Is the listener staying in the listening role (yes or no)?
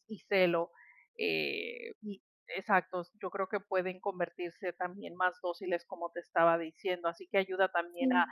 yes